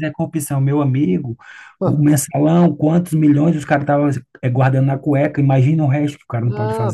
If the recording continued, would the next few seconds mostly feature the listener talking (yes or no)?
yes